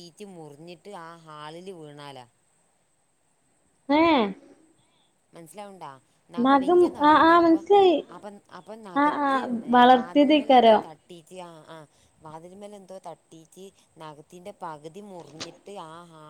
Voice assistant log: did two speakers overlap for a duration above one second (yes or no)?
yes